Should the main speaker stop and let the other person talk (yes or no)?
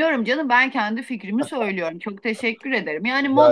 no